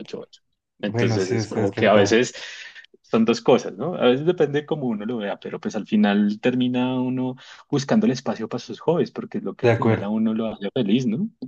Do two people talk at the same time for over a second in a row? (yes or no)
yes